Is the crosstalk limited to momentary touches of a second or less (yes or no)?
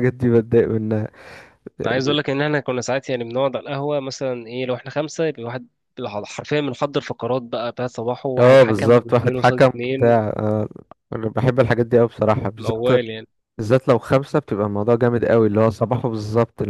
no